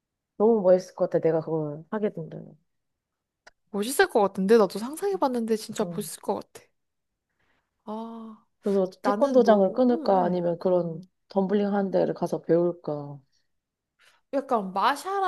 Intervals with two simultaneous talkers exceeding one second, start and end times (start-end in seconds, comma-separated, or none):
9.0-10.5